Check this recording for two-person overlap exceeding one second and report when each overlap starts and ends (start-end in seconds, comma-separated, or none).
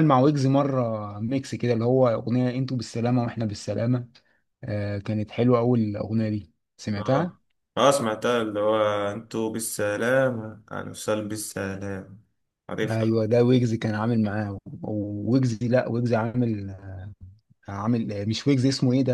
none